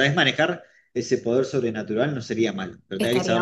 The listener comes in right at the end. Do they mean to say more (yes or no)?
yes